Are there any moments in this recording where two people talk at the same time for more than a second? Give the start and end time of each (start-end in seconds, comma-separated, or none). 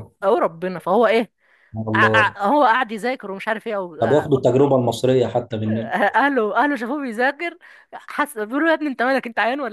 none